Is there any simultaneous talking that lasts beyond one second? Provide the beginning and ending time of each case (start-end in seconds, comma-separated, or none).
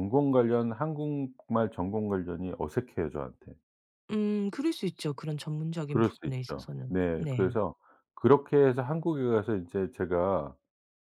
5.9-7.5